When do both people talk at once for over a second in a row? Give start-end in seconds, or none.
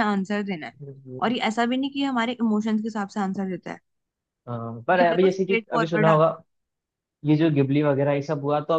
5.0-6.3